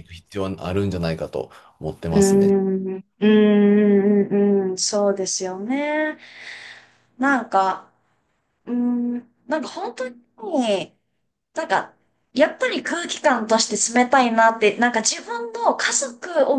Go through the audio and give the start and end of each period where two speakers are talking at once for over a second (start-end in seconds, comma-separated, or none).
none